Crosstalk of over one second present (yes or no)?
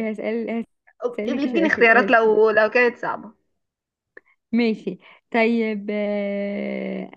yes